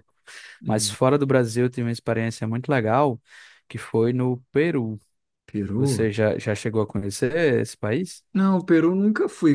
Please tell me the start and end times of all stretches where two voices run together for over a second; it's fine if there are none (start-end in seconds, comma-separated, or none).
none